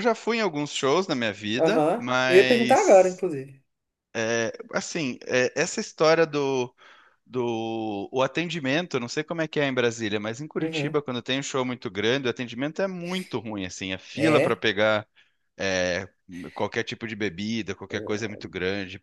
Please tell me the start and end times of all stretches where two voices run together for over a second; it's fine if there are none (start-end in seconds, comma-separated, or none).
1.6-3.2